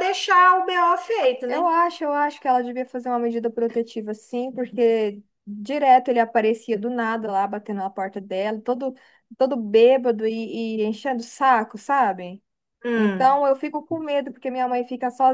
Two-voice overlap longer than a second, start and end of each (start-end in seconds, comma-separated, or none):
none